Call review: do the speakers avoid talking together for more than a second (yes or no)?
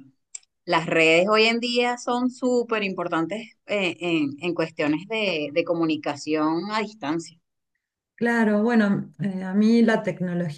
yes